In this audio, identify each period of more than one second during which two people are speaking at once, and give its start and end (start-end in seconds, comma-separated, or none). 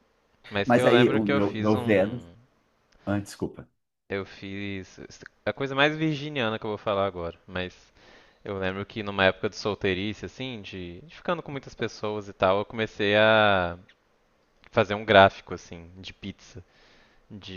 0.7-2.2